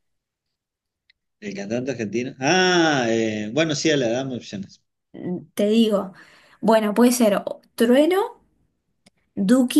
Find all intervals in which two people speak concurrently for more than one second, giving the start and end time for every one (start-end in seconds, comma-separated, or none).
none